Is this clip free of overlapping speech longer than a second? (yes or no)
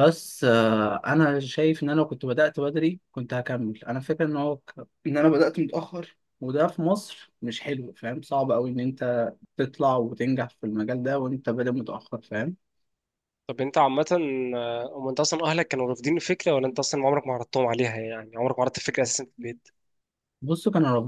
yes